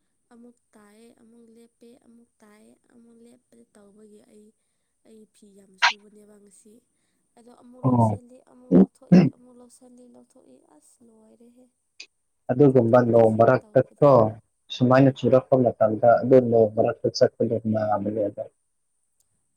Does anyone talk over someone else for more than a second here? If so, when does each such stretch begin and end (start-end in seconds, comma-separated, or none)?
12.7-14.1